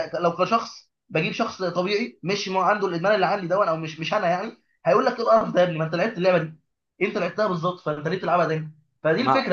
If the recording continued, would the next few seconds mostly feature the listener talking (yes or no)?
no